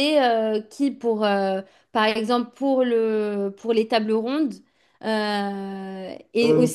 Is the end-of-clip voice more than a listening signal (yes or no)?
no